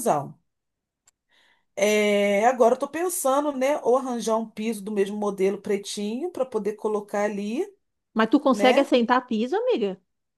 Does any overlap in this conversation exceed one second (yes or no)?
no